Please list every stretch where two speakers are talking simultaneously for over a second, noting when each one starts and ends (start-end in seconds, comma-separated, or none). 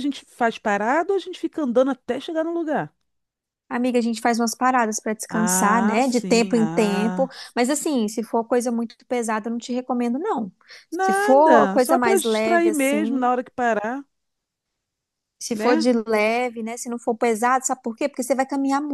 5.3-7.3, 11.0-13.3